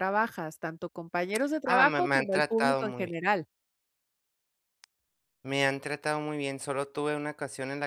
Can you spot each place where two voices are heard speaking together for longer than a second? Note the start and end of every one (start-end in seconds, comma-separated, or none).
1.6-3.2